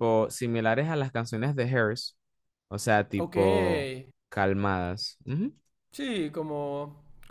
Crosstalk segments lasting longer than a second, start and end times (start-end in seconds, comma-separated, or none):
none